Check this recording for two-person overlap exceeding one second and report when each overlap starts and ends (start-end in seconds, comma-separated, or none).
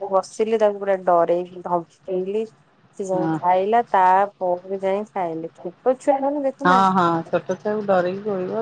none